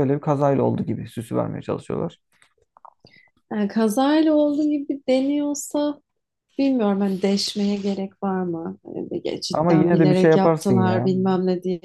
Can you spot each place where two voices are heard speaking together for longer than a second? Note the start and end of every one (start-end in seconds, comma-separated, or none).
9.5-11.1